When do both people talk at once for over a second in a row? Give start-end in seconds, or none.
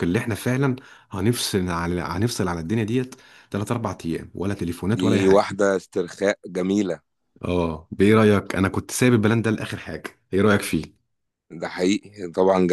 none